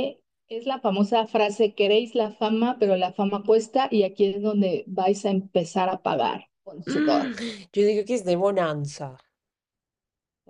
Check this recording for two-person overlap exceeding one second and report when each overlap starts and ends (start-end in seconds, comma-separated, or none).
none